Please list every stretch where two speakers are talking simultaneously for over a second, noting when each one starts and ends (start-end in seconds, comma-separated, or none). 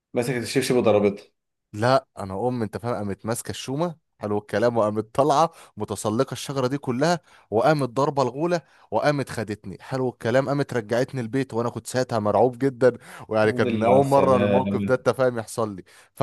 13.4-15.0